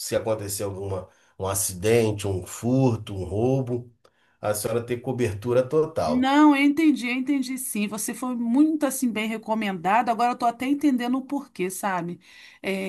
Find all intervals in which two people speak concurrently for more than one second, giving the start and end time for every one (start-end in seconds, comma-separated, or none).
none